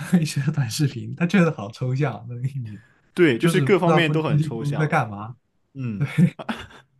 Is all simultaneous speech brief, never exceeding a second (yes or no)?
no